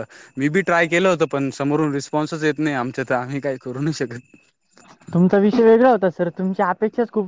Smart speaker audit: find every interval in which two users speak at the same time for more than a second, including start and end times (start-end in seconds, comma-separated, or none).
none